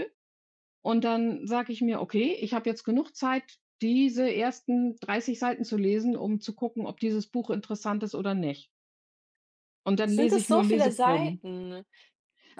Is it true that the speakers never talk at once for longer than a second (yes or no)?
no